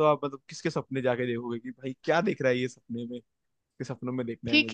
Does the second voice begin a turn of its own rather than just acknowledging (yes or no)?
yes